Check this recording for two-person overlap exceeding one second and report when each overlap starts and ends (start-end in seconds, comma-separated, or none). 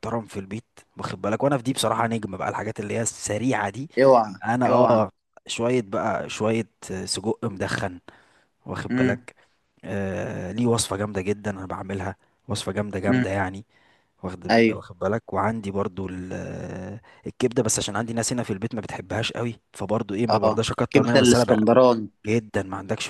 20.3-21.7